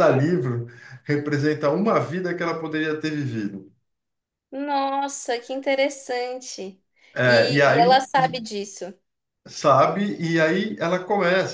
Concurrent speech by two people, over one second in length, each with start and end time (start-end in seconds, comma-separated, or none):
7.2-8.4